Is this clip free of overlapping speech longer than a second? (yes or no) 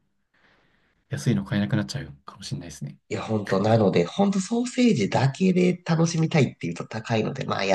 yes